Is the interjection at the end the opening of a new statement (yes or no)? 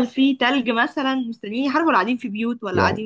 yes